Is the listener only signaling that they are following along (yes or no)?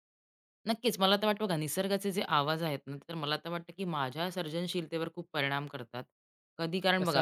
yes